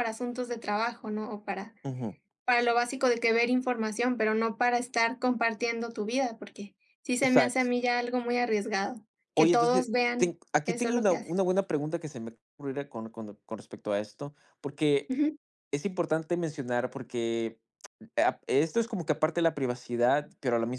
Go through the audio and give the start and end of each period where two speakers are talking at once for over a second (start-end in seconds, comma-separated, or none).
9.3-11.4